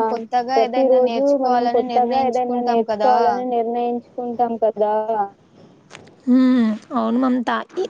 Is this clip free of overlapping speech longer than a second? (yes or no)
no